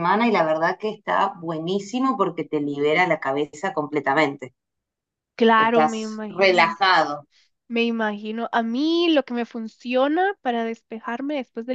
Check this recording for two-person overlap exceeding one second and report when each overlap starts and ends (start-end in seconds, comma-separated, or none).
5.6-6.8